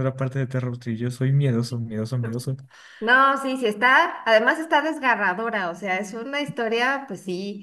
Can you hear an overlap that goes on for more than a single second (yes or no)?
no